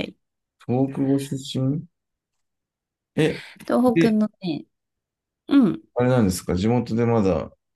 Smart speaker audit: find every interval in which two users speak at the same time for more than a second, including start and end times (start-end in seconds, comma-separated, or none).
none